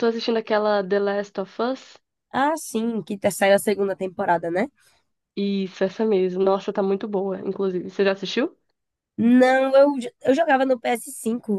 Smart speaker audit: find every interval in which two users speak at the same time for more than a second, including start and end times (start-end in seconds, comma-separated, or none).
none